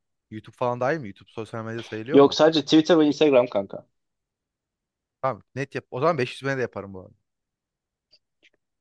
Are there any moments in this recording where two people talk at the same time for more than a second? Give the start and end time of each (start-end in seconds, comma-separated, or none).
none